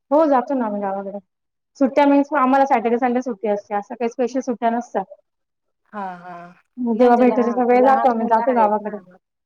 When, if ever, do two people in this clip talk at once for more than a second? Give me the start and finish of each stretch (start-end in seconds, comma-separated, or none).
7.0-8.9